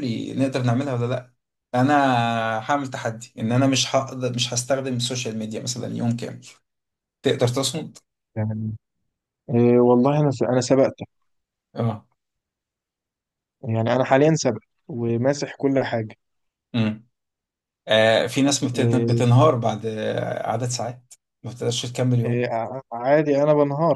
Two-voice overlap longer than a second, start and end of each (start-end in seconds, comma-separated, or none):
none